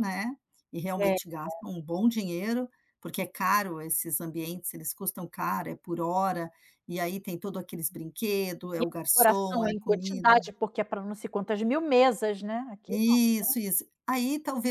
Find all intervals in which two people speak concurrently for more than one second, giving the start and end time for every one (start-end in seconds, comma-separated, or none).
8.8-10.3